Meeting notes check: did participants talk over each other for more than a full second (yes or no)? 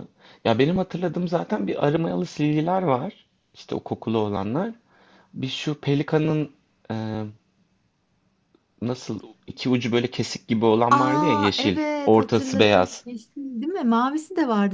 yes